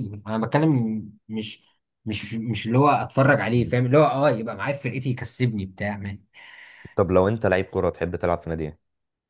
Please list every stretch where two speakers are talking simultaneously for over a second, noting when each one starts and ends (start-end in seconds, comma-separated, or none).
none